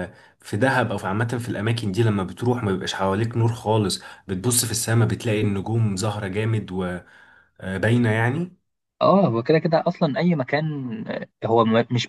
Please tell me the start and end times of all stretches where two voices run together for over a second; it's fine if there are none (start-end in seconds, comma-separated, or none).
none